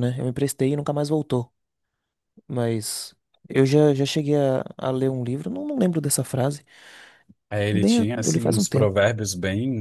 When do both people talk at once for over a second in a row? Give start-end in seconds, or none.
7.7-9.0